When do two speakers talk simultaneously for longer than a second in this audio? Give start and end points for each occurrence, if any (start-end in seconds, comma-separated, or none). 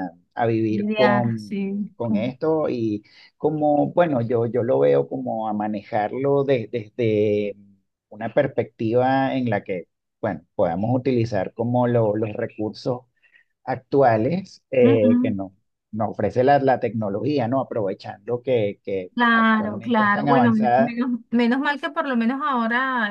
0.7-2.3, 19.1-21.0